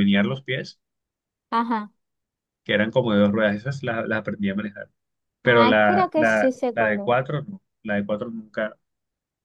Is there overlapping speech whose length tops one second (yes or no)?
yes